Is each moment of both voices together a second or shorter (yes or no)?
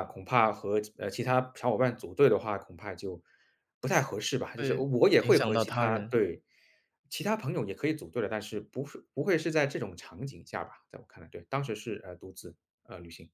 no